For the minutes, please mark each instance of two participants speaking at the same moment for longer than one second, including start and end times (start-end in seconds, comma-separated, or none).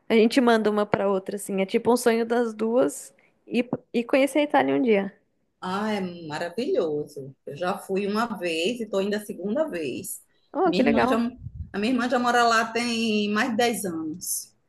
none